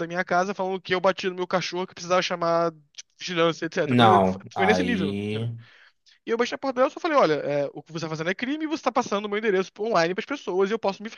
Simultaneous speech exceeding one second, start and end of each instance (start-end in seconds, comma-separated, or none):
3.9-5.5